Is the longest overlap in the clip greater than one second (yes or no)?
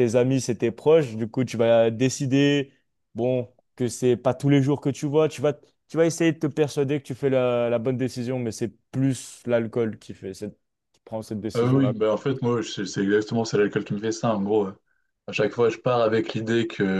no